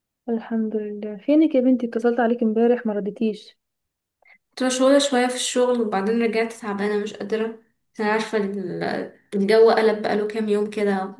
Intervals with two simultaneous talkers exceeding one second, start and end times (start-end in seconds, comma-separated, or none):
none